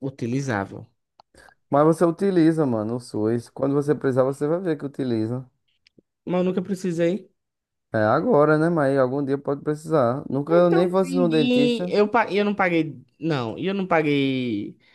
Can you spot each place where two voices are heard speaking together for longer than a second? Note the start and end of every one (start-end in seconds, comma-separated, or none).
10.5-12.0